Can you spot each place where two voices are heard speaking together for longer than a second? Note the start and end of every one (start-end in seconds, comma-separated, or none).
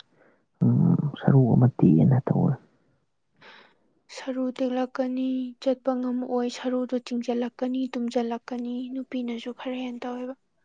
none